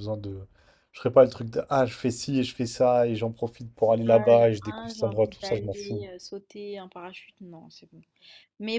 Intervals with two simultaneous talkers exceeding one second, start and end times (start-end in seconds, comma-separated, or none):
4.1-6.0